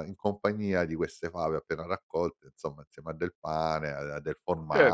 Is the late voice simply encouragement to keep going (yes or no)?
no